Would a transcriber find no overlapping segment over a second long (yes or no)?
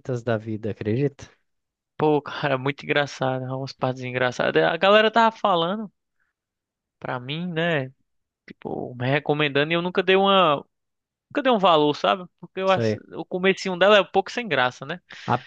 yes